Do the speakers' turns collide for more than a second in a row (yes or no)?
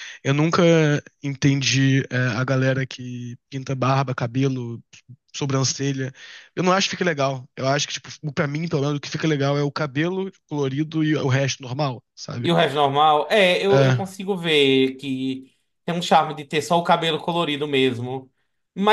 no